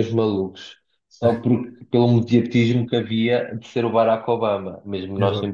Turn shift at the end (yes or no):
no